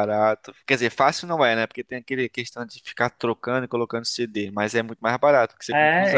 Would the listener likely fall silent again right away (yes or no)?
no